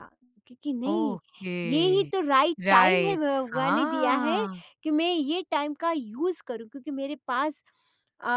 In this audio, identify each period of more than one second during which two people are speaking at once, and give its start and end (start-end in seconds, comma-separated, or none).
2.6-4.4